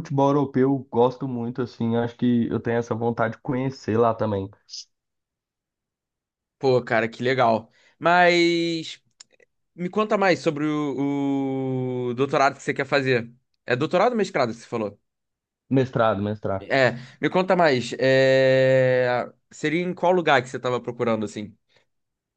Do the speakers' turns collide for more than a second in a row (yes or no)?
no